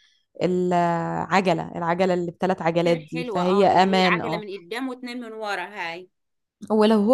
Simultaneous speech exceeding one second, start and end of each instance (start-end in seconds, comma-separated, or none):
2.8-4.4